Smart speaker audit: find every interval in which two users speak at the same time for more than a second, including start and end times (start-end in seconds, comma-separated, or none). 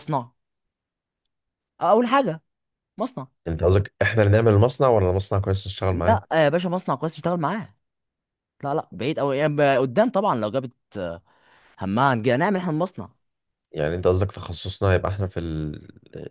none